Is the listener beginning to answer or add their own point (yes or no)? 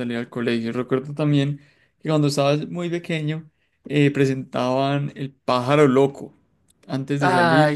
no